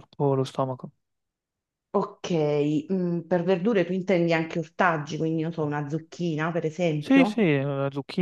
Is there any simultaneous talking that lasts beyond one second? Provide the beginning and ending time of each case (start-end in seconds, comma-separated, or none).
none